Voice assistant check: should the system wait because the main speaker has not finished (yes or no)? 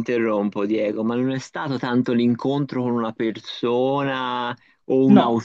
yes